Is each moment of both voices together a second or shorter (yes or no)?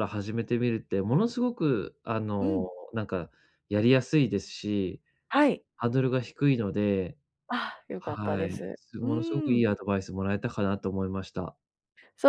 no